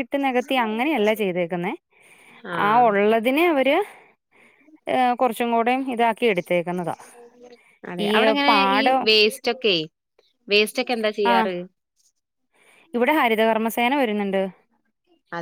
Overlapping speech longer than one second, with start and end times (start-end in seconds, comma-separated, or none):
none